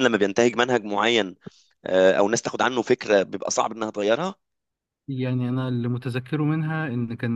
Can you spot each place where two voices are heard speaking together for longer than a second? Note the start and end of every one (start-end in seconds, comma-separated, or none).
none